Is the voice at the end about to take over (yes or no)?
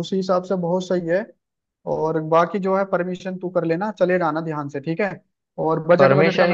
yes